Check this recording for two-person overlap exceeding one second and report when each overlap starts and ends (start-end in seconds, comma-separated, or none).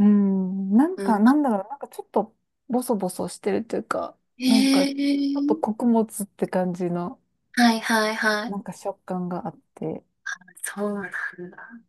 none